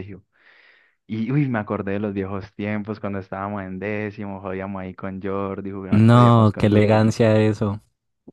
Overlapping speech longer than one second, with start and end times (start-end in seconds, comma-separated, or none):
5.9-7.1